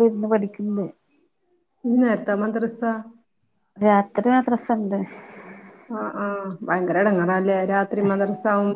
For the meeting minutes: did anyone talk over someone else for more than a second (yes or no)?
no